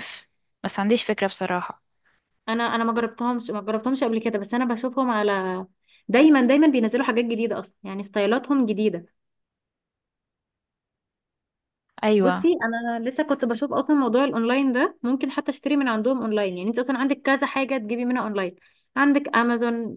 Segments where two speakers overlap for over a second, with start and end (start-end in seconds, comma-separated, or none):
none